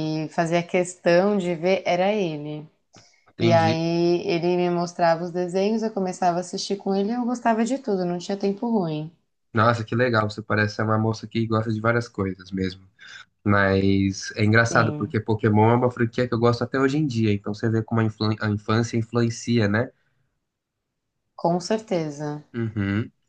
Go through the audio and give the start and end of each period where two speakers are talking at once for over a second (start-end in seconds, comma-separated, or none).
none